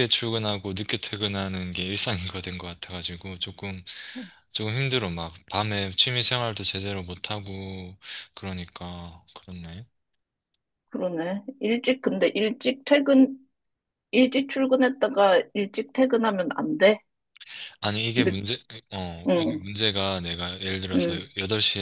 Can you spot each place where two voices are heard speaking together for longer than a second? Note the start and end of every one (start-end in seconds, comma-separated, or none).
none